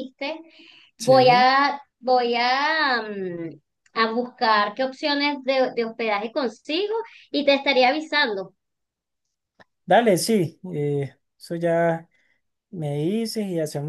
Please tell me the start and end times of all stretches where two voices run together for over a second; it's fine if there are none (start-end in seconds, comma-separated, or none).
none